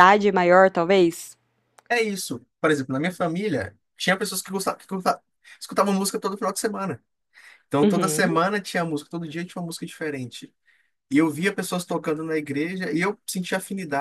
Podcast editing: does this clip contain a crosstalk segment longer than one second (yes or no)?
no